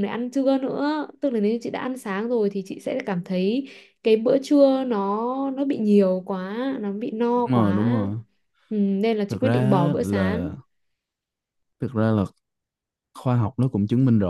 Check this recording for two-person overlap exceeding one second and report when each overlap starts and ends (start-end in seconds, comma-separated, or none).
9.3-10.5